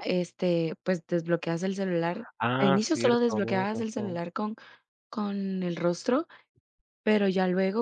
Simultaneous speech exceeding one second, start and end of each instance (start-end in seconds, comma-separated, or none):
2.4-4.2